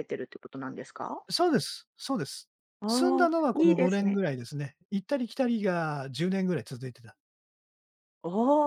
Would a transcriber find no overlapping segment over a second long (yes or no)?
no